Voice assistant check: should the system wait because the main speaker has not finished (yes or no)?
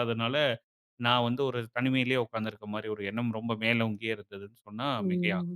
no